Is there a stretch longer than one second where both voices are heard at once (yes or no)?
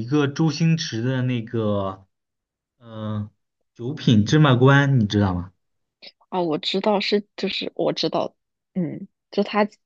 no